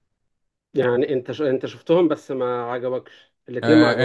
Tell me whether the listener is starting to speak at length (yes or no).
yes